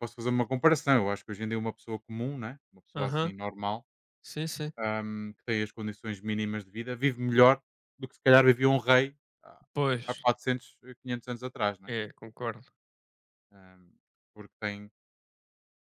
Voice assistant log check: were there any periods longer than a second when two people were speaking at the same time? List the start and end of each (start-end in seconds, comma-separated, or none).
none